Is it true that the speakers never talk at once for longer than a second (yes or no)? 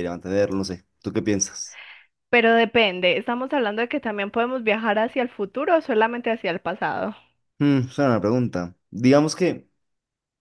yes